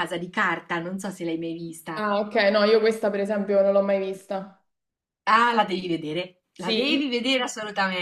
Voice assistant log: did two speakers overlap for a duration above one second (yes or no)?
no